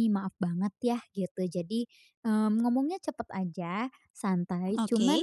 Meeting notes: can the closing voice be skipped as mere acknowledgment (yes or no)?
yes